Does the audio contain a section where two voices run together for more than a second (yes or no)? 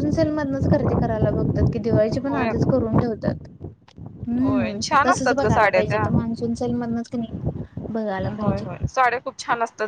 yes